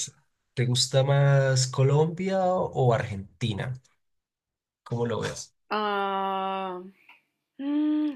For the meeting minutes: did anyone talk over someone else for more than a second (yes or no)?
no